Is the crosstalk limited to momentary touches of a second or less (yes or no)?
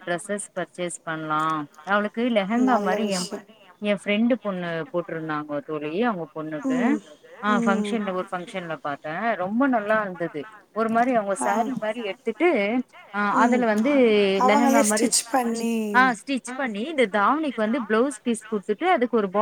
yes